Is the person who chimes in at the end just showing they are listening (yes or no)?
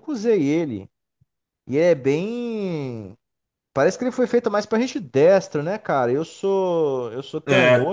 yes